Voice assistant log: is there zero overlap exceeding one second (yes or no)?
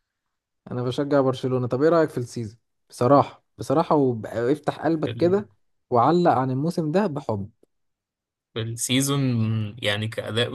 yes